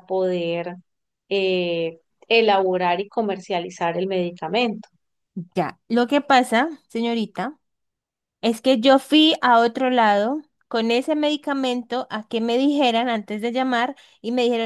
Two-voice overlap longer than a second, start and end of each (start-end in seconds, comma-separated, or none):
none